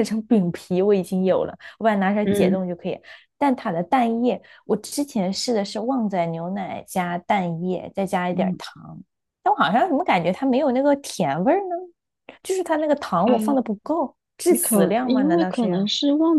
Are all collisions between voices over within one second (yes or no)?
no